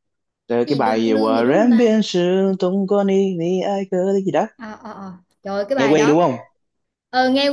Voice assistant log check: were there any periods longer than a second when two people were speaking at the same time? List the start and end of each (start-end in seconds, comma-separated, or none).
0.7-1.9